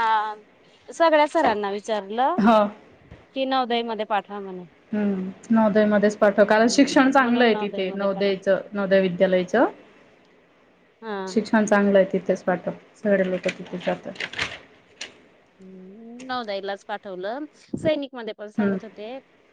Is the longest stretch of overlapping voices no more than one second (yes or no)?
no